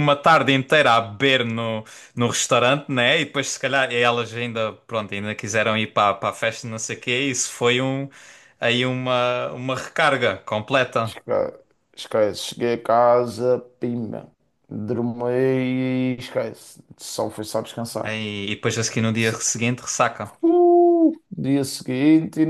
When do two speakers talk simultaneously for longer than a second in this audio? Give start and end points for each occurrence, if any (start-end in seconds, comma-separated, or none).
none